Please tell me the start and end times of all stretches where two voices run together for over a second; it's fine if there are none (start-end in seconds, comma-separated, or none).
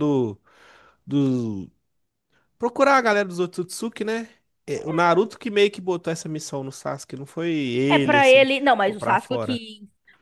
7.9-9.6